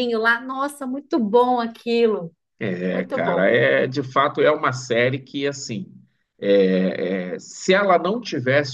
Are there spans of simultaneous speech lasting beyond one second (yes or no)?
no